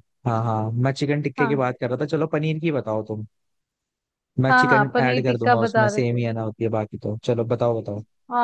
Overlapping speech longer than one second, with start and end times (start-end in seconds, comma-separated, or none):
4.5-6.2